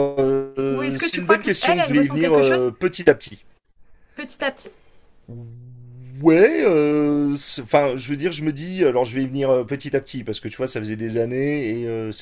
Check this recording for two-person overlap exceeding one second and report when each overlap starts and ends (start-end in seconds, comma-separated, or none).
0.7-2.7